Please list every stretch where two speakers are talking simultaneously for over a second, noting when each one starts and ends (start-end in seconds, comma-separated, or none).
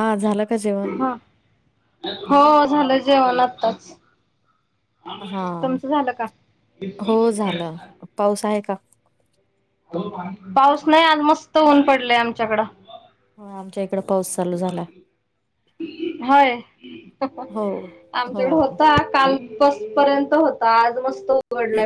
none